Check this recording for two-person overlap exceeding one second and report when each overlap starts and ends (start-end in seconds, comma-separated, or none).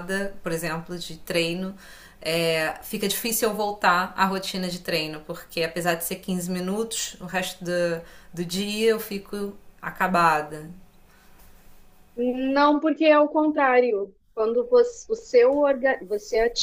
none